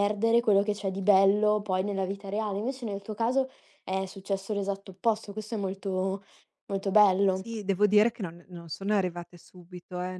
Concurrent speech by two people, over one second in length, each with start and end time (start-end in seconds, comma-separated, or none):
none